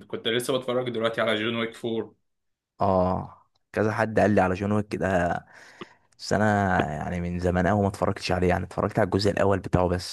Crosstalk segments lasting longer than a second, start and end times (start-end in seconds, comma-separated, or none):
none